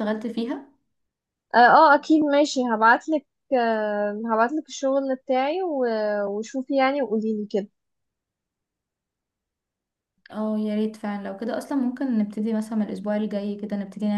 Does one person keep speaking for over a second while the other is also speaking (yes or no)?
no